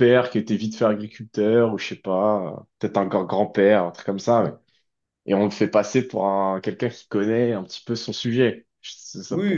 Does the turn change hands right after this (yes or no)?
yes